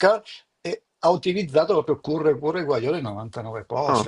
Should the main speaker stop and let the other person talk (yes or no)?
no